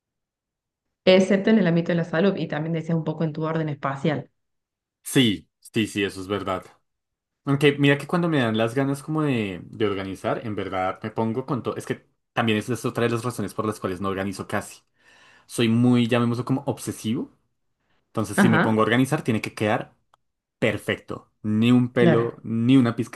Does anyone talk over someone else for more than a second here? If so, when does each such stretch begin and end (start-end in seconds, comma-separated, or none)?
none